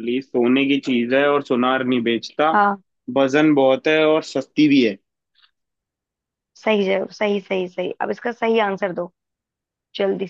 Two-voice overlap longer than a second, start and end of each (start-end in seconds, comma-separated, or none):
none